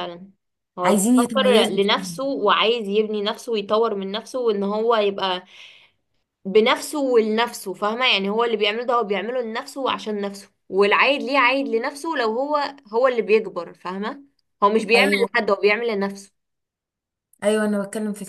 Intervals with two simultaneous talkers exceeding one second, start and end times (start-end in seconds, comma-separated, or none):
0.8-2.2